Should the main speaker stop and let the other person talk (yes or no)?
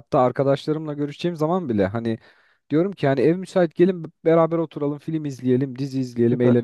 no